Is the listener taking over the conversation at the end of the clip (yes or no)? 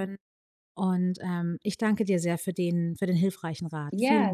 yes